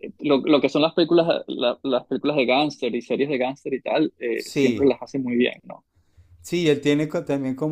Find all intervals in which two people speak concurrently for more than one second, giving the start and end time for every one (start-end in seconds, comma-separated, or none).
none